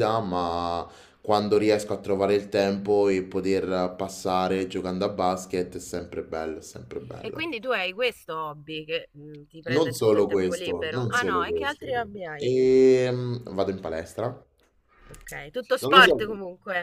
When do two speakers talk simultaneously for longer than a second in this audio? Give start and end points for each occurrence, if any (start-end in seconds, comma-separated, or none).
9.7-12.5